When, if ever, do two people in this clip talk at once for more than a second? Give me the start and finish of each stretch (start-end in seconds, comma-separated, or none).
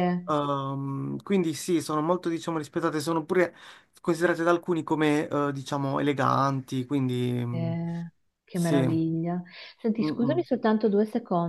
none